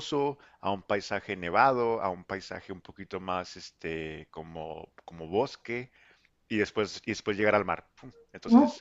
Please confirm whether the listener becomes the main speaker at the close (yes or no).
no